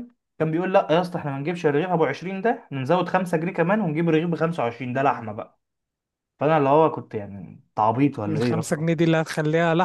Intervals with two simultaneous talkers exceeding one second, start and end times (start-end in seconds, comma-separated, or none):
none